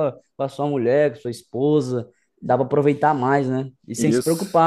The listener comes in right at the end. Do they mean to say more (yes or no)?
yes